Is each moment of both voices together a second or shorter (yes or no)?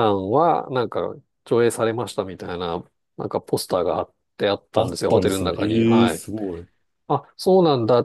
no